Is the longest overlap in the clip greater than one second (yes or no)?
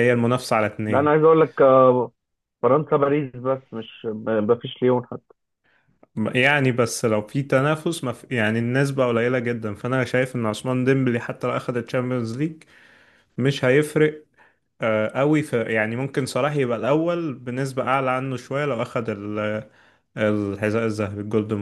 no